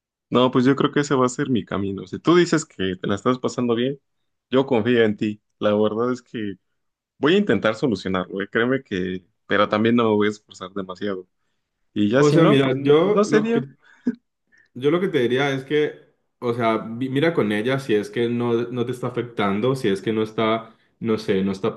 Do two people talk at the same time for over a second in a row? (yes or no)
yes